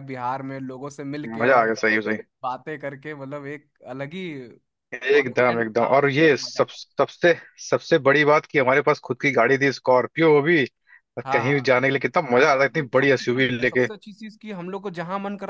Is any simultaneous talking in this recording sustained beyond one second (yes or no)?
yes